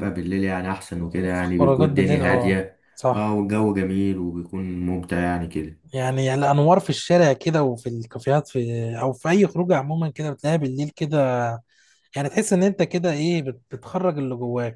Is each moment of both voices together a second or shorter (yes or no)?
no